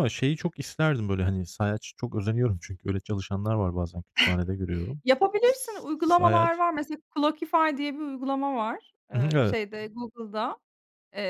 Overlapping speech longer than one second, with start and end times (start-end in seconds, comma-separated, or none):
none